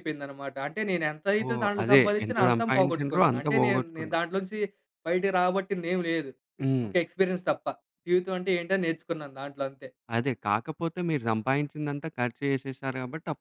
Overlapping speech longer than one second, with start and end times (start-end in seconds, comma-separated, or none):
1.5-4.2